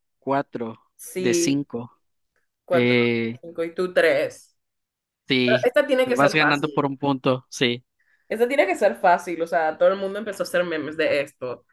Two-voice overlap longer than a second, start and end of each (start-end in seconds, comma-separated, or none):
5.4-7.0